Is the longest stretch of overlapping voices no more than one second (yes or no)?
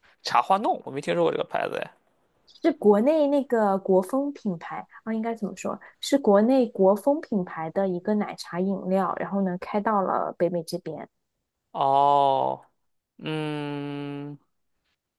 yes